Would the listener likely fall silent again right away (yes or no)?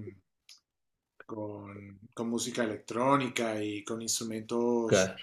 yes